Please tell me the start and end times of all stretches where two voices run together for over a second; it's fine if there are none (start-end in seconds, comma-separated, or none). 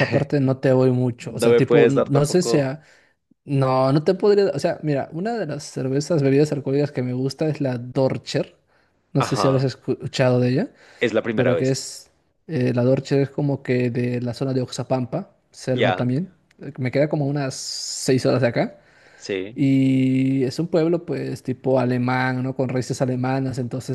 1.2-2.7